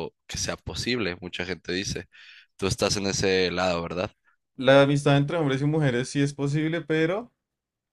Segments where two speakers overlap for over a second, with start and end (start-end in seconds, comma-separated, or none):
none